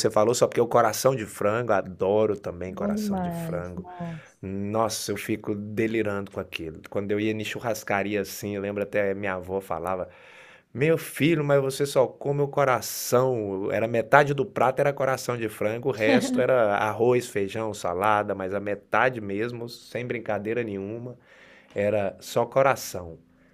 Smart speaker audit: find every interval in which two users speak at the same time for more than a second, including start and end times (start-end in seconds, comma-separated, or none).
2.7-3.9